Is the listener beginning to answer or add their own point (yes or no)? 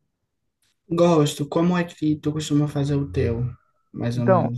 yes